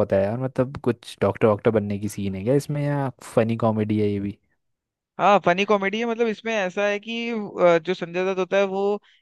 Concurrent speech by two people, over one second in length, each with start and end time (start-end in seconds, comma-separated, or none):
none